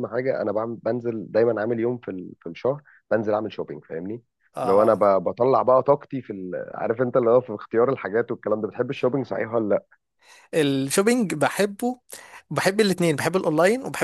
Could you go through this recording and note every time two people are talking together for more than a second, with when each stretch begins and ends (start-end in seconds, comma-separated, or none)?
none